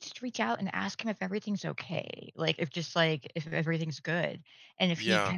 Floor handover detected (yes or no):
no